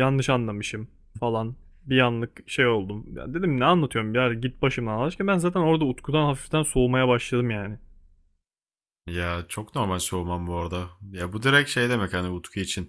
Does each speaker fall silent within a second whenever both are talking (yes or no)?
yes